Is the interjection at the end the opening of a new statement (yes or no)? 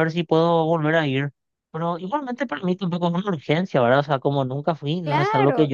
yes